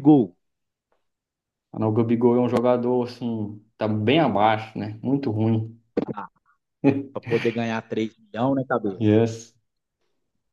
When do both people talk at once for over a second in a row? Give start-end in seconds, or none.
none